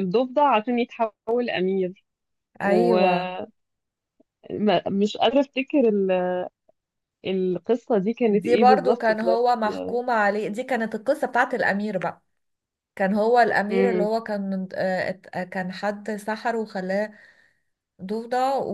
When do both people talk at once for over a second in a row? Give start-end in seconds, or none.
8.3-9.6